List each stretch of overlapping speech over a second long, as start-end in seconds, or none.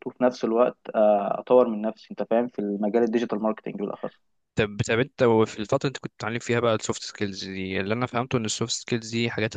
none